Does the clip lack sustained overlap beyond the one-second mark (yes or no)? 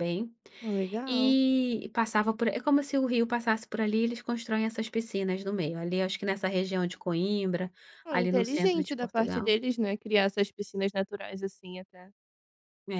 no